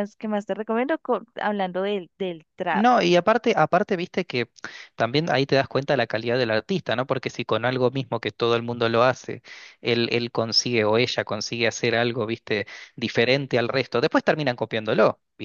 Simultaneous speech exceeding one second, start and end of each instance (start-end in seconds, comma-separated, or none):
none